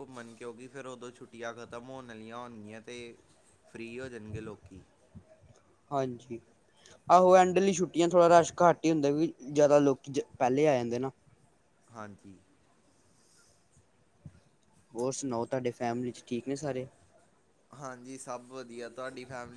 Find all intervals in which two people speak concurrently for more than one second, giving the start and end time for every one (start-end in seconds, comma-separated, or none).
none